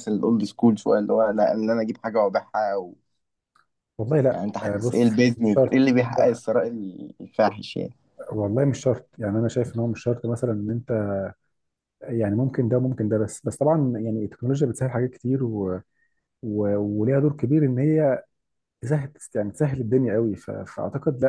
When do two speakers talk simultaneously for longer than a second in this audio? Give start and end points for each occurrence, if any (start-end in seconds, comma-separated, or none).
4.3-6.4